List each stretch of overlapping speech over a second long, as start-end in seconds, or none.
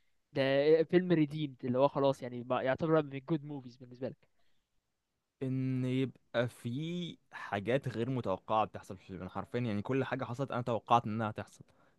none